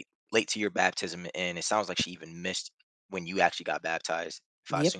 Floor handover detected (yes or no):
yes